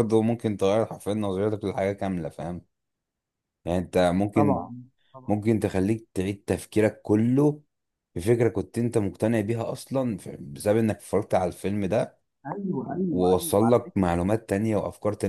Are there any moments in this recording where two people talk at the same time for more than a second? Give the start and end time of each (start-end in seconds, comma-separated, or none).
12.8-14.2